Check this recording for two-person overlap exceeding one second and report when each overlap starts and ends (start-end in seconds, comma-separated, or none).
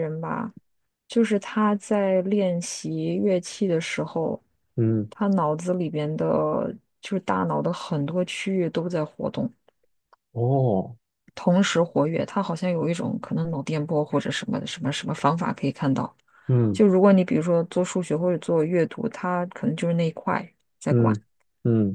none